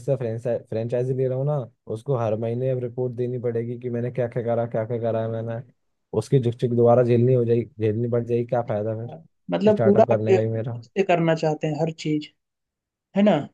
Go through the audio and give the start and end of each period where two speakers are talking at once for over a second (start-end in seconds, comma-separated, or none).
9.1-10.8